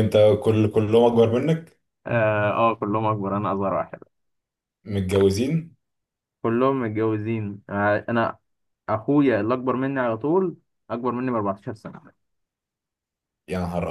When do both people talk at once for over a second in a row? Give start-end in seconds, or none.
none